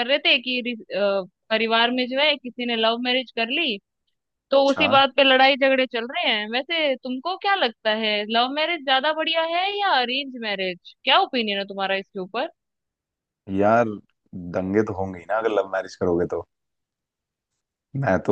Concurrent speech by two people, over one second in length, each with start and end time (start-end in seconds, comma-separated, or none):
none